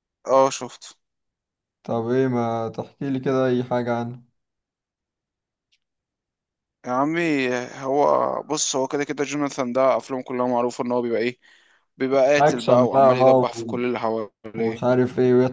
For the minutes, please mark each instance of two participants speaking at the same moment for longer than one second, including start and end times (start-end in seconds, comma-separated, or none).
12.4-13.8